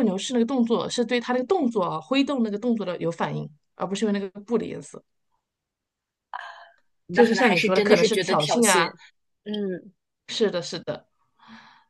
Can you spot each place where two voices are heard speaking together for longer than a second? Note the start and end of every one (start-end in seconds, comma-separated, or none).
7.1-8.9